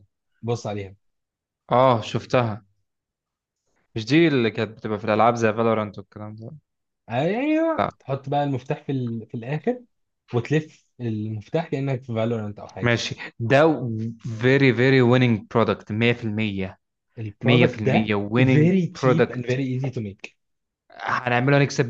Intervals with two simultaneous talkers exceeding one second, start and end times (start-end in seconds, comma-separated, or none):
17.4-19.4